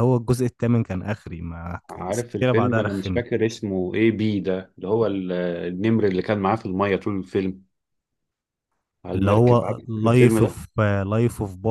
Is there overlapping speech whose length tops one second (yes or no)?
yes